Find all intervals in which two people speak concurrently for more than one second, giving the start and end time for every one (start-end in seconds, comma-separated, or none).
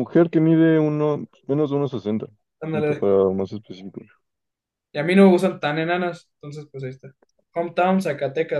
none